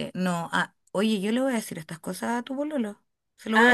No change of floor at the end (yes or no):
no